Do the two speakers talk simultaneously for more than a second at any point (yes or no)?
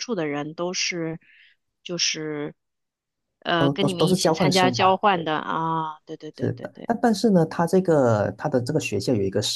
yes